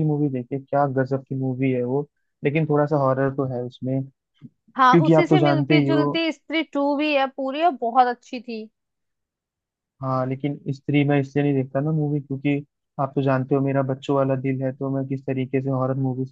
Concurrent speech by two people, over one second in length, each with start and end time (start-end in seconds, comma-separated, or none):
4.8-6.1